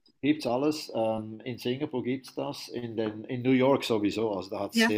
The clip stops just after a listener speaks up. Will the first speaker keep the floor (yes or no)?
yes